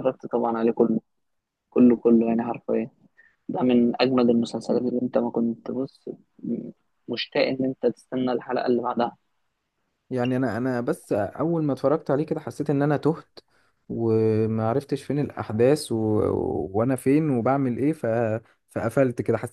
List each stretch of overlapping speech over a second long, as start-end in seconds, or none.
none